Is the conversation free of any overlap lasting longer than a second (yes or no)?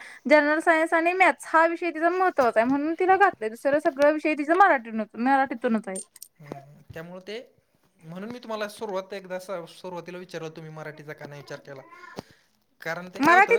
yes